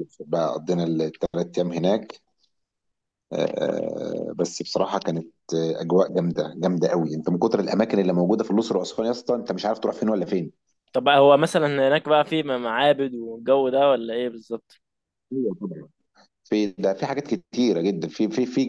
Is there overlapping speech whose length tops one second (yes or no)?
no